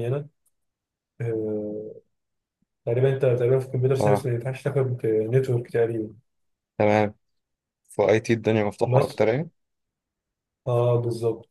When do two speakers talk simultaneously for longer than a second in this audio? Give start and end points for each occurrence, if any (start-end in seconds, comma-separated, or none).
none